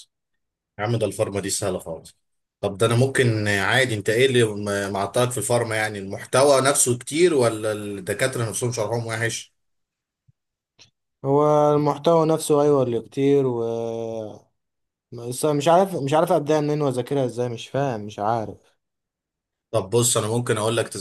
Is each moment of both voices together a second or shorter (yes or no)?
yes